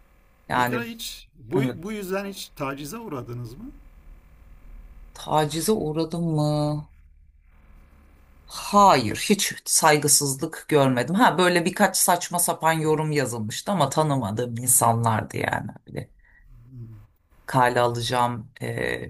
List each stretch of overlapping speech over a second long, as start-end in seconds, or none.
none